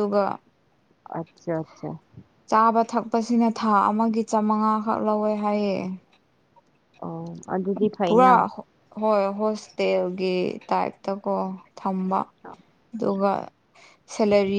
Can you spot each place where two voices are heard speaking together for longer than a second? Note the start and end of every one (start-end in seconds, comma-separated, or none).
none